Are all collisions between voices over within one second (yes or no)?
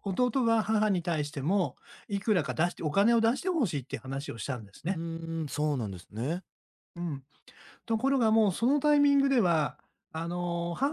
yes